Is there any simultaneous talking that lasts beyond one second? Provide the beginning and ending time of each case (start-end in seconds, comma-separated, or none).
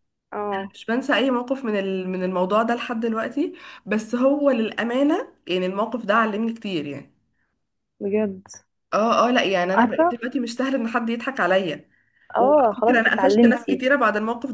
12.4-13.9